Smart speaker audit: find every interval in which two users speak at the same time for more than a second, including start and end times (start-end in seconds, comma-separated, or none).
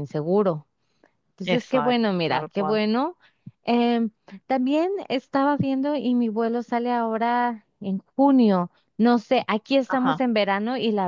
1.4-2.8